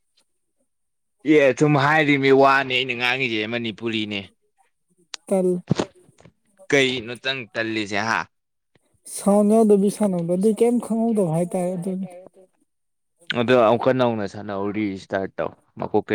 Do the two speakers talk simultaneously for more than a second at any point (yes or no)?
no